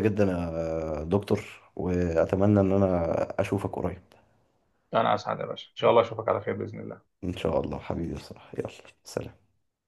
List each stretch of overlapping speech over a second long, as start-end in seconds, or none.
none